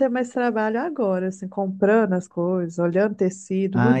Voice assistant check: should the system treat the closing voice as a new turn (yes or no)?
yes